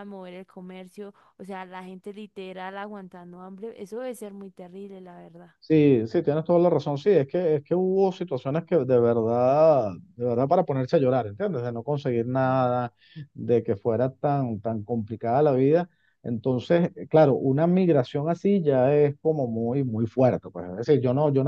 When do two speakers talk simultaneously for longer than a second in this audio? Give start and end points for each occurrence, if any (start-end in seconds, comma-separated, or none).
none